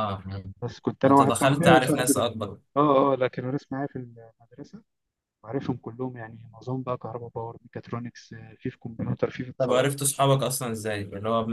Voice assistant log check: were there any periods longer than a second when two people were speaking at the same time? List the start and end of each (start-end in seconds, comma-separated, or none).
1.1-2.3